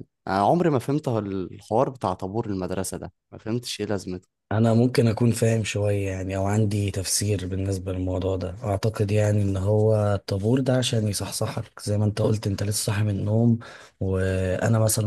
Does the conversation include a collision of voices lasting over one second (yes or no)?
no